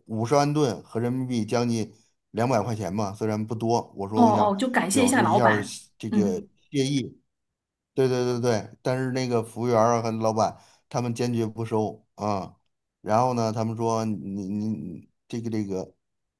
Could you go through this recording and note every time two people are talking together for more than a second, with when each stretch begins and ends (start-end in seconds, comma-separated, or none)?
4.1-6.5